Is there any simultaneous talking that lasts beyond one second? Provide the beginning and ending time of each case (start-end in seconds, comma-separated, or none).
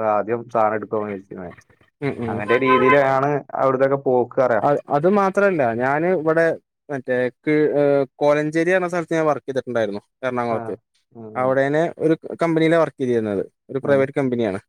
none